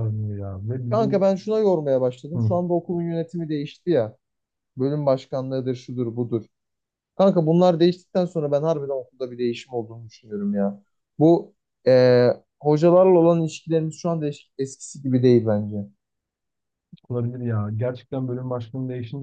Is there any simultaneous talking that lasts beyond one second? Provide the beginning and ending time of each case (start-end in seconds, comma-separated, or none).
none